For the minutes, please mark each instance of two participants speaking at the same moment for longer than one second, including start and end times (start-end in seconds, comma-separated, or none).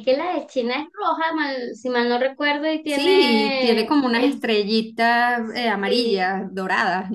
2.9-4.4